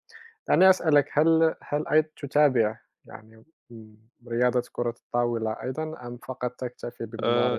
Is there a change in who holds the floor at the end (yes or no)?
yes